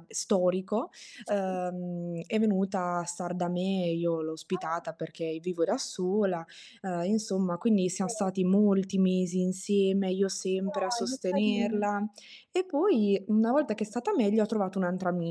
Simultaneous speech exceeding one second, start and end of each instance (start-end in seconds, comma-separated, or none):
10.5-11.9